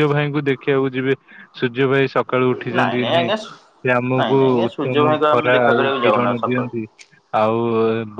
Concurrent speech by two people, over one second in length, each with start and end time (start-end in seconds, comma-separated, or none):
4.2-6.7